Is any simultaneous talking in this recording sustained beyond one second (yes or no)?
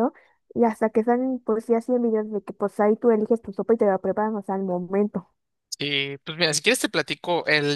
no